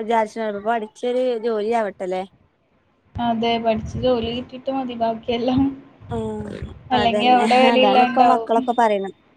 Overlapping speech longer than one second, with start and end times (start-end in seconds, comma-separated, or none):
7.0-8.5